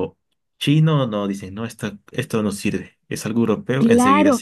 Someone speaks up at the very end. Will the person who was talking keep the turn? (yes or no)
no